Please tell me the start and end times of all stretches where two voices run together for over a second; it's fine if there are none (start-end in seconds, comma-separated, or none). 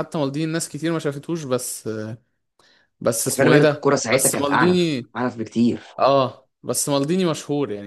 3.2-5.1